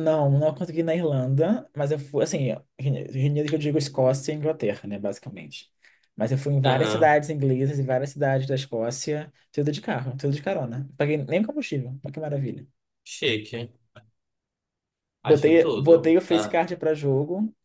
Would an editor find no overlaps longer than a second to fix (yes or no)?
no